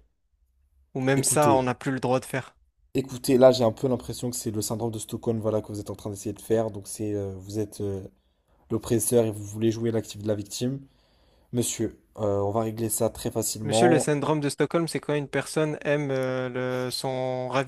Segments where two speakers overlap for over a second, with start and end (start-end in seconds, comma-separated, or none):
none